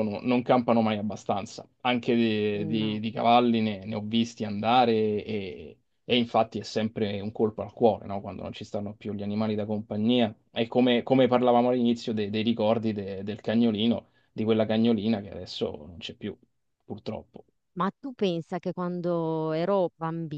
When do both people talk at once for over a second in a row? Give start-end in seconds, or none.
none